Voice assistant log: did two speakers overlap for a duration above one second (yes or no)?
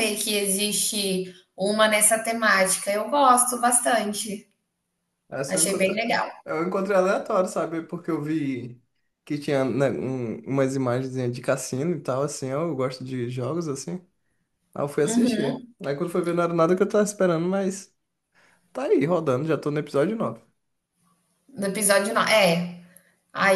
no